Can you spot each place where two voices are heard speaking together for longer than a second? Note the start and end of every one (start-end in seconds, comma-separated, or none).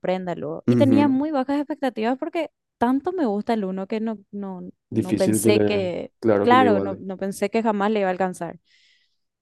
5.0-7.0